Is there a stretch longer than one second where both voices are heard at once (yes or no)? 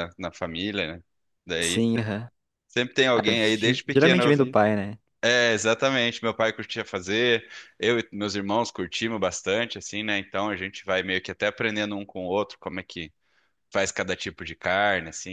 yes